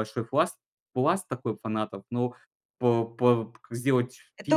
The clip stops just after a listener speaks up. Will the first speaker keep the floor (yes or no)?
no